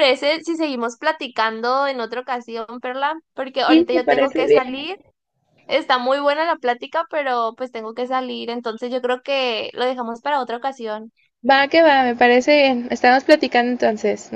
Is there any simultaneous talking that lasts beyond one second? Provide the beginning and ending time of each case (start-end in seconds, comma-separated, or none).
3.6-4.9